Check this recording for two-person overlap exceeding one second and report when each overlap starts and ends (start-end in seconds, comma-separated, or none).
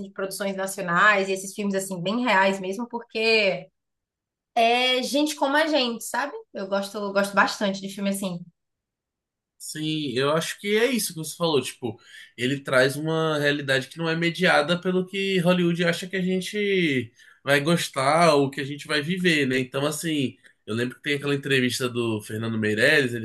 none